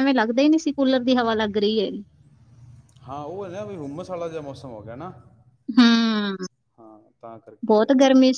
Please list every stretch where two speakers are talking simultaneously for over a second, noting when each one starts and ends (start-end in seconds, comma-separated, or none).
none